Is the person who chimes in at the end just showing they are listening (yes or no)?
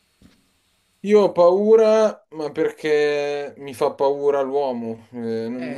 yes